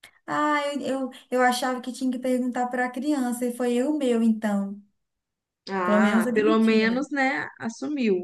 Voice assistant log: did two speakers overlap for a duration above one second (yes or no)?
yes